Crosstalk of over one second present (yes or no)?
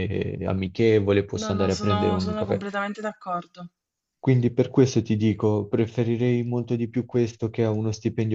yes